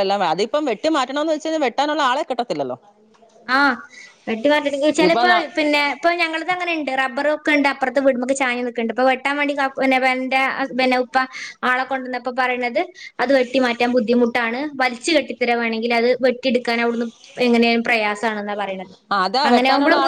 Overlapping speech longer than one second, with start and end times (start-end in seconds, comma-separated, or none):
none